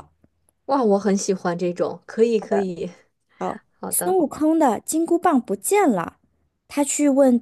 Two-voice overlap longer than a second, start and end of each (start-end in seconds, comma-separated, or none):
none